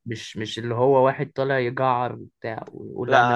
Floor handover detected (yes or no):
yes